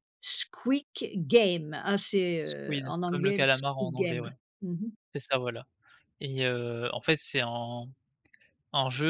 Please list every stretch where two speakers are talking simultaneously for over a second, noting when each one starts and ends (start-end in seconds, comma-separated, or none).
2.4-4.3